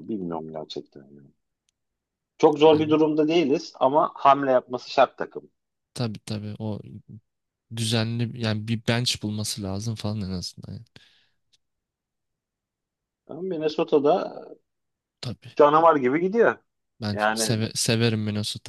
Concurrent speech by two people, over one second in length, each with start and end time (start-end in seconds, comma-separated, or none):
none